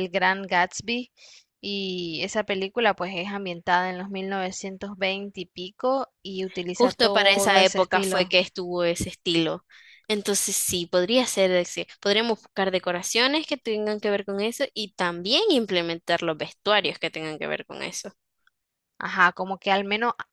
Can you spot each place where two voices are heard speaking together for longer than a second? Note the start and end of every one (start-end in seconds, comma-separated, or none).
6.7-8.3